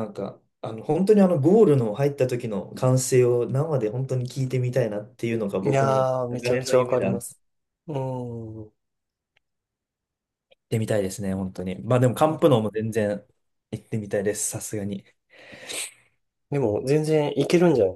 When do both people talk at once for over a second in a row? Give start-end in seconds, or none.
5.6-7.2